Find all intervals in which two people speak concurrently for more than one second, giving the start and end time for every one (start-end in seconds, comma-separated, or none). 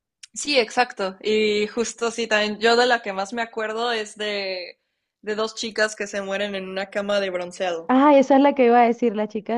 none